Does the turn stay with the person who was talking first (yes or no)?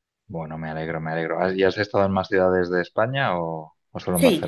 no